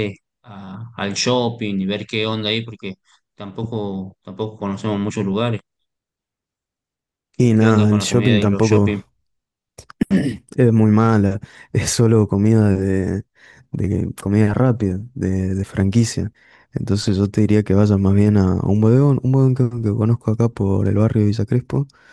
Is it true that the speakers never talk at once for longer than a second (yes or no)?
no